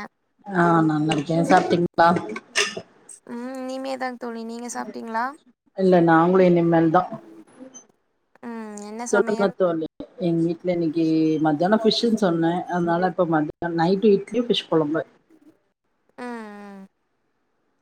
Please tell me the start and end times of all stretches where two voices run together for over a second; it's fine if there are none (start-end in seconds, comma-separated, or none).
none